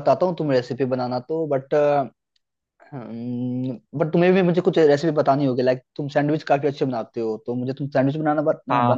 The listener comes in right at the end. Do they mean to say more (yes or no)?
no